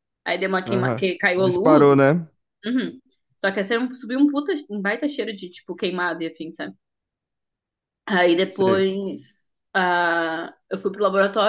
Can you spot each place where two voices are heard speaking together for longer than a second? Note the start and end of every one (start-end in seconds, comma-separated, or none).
0.7-2.1